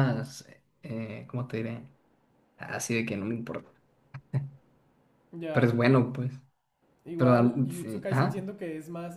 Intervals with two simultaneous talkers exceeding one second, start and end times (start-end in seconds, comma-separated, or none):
7.2-8.5